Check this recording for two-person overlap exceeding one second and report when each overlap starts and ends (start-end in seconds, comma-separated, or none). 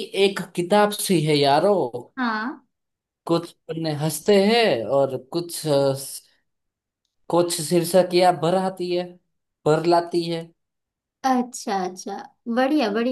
none